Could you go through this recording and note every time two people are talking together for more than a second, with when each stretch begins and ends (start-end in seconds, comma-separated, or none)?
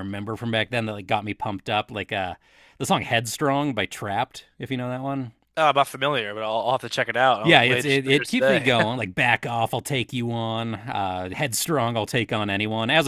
7.4-8.7